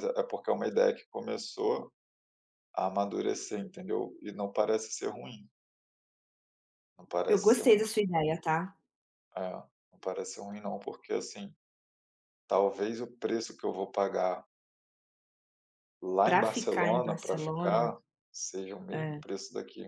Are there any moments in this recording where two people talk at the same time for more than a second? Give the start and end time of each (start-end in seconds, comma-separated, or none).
16.2-17.9